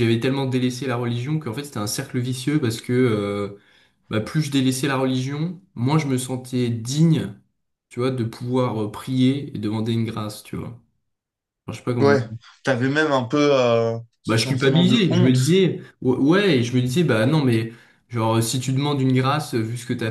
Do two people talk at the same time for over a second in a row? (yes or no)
yes